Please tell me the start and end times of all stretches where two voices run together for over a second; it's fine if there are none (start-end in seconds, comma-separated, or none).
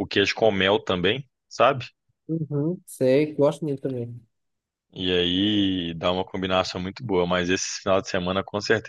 none